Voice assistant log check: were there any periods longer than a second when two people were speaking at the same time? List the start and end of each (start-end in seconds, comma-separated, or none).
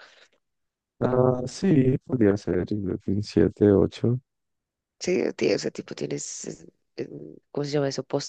none